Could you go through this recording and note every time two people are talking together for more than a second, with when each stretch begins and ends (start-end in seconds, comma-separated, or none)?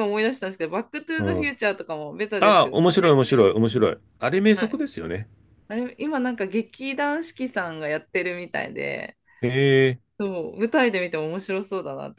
2.4-3.9